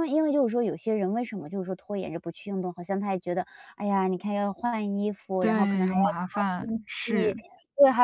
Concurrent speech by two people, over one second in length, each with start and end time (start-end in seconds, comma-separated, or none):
5.4-7.3